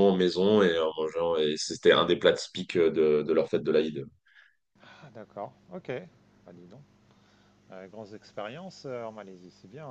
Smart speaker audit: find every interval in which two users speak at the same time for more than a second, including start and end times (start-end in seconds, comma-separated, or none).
none